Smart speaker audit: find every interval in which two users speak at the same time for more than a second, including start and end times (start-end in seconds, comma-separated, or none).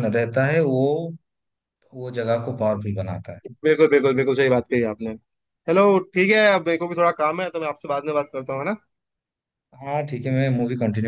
none